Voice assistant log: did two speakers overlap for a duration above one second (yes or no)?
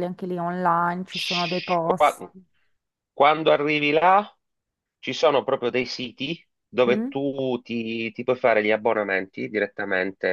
no